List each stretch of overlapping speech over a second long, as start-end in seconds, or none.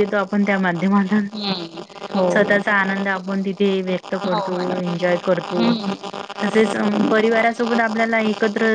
none